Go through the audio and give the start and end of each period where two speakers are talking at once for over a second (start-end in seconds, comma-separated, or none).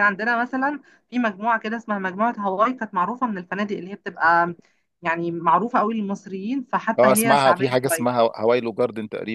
7.0-8.2